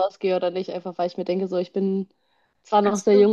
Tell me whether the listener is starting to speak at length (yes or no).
no